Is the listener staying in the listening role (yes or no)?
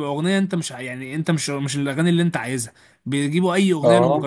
yes